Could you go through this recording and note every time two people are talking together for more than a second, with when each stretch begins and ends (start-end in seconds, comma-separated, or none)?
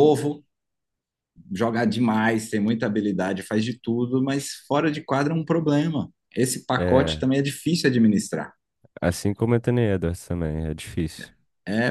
none